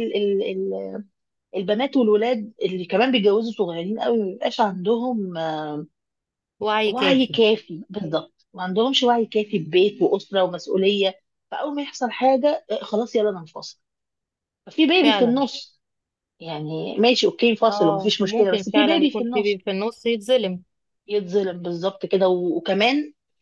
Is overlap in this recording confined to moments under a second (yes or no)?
no